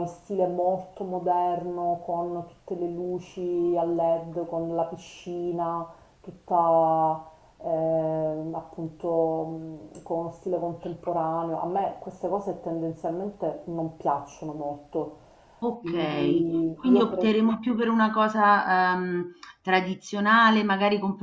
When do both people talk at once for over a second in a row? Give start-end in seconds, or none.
15.8-17.4